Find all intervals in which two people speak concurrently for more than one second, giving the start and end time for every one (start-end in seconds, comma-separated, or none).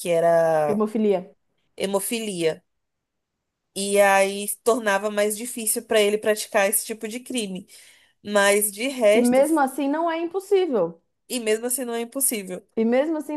none